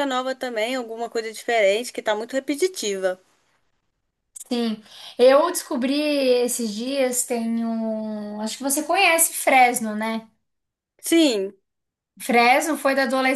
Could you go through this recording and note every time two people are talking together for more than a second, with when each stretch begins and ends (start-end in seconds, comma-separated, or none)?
none